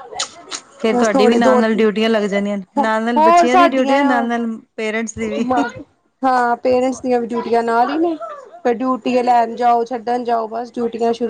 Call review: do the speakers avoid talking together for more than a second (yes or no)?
no